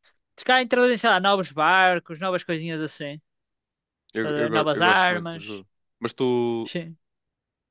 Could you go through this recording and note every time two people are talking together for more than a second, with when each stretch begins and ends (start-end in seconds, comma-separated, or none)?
4.2-5.6